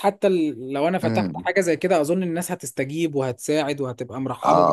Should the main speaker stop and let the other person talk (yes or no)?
yes